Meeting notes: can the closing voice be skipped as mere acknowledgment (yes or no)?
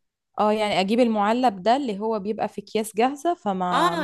no